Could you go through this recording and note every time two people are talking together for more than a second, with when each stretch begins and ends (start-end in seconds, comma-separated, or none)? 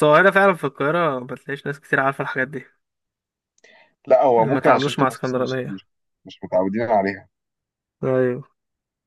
4.4-5.8